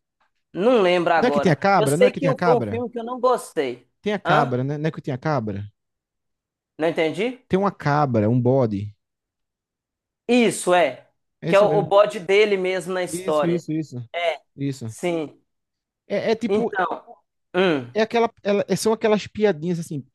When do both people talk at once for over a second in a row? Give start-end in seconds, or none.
1.2-2.8